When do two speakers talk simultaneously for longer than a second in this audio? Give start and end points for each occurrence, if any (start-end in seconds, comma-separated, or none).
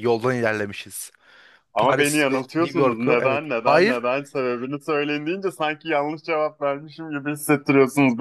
1.8-4.0